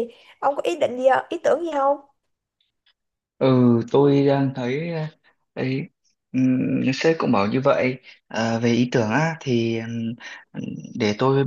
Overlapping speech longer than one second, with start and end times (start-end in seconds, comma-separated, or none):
none